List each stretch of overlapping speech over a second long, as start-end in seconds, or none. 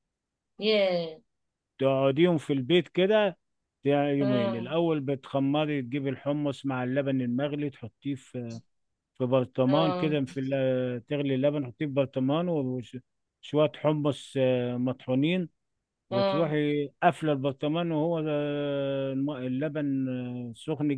none